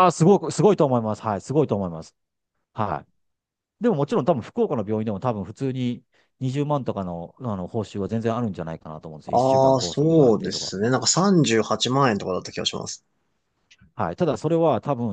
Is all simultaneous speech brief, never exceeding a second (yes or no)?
no